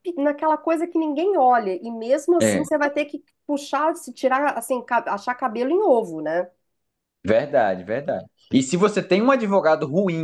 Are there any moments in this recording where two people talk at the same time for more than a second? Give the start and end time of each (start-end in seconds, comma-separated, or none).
none